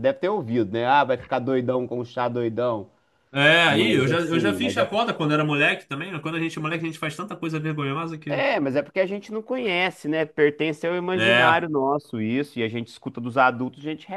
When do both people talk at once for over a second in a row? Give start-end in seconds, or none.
3.7-4.9